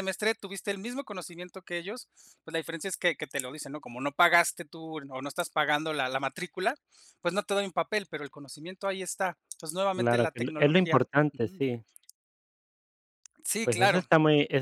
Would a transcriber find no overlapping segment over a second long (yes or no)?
no